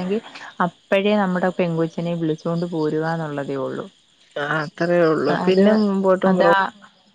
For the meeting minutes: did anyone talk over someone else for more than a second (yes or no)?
no